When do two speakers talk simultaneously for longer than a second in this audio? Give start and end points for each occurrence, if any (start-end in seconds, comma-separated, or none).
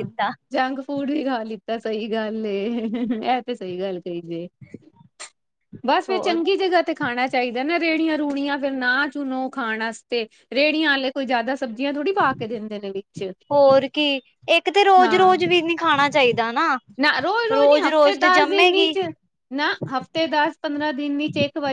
17.6-18.9